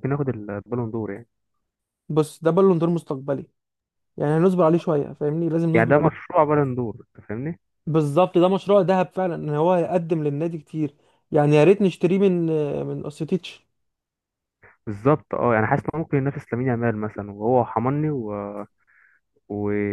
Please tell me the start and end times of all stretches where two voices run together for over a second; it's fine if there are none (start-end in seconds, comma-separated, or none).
none